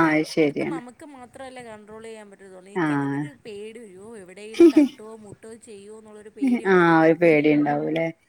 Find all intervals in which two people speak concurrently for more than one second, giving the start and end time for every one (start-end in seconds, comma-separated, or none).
none